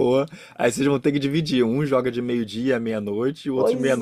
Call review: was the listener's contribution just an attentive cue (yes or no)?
no